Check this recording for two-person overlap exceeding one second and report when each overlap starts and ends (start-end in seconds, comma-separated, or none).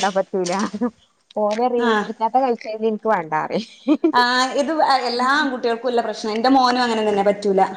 none